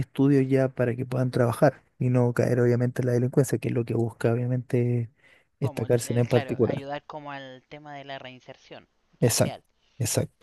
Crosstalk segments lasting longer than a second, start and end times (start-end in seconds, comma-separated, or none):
5.6-6.9